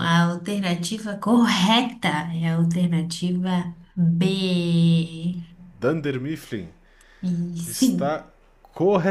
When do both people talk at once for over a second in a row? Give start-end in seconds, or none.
none